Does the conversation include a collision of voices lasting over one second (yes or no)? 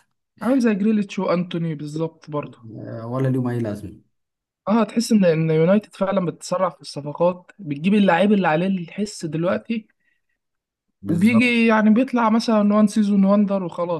no